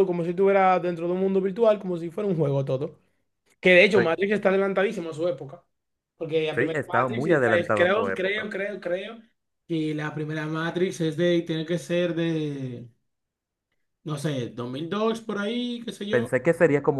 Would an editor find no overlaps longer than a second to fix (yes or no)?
no